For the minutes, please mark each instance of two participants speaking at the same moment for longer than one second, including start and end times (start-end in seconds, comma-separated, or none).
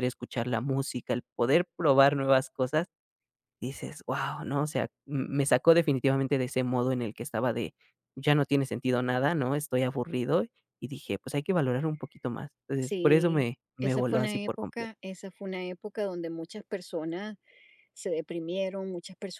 12.8-14.9